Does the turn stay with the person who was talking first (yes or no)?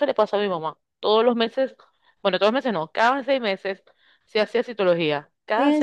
no